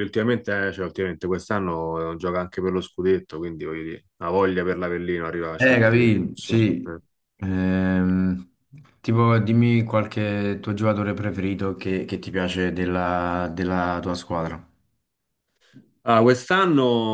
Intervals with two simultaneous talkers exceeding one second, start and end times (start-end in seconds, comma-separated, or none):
5.6-6.9